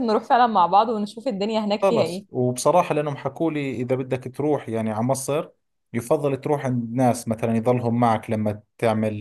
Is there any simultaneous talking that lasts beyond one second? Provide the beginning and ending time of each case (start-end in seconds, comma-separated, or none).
none